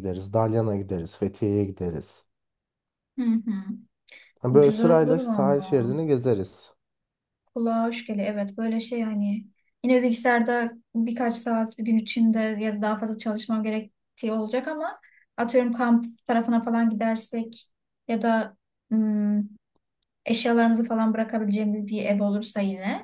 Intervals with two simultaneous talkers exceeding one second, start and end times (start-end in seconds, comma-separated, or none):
4.5-5.9